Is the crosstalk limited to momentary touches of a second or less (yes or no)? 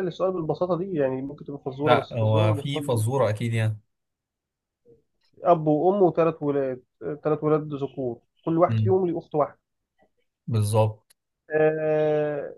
no